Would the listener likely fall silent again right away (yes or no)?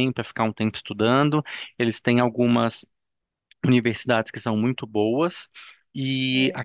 yes